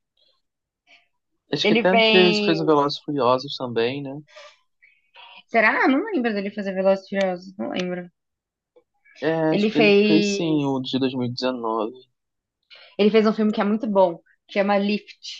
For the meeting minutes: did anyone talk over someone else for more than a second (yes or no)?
yes